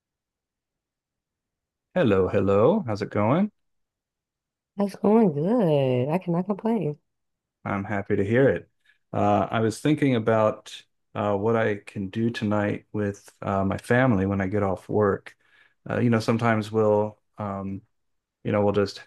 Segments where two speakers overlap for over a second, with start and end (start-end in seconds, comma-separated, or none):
none